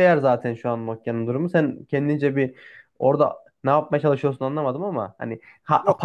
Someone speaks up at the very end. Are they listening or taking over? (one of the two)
listening